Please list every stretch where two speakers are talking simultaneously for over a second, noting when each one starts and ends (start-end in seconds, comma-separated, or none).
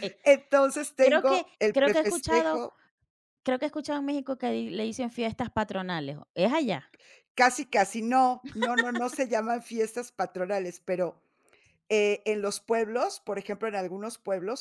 1.0-2.6